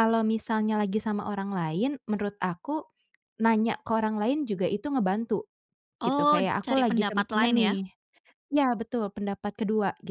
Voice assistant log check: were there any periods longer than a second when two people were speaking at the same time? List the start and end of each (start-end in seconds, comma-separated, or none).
6.0-7.8